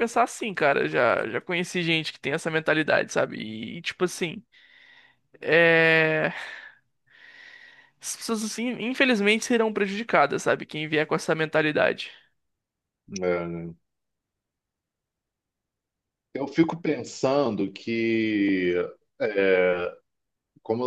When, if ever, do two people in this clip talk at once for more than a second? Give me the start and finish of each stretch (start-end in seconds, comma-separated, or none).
none